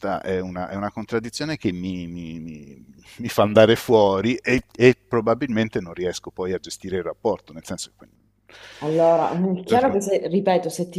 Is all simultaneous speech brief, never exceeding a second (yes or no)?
yes